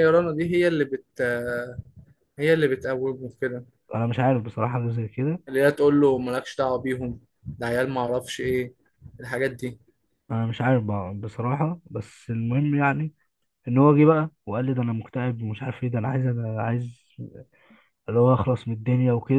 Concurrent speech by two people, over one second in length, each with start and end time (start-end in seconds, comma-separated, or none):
none